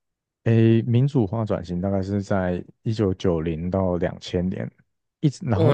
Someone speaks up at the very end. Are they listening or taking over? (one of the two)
taking over